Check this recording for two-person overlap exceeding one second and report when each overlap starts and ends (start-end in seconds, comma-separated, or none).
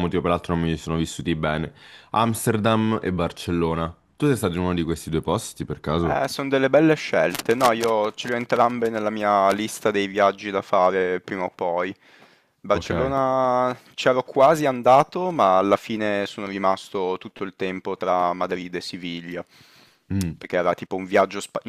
none